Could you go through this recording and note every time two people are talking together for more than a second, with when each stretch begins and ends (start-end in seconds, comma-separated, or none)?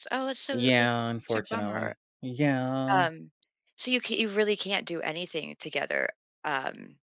0.5-1.9